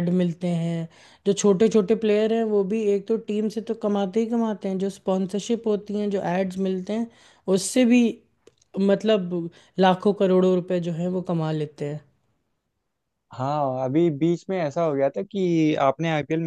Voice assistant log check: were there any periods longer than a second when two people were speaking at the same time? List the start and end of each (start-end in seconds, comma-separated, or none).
none